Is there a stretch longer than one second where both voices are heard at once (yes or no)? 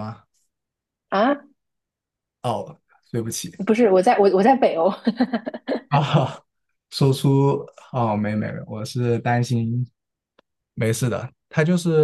no